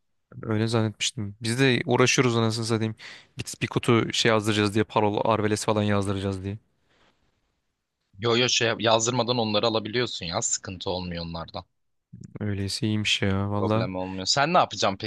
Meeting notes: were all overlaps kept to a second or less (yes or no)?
yes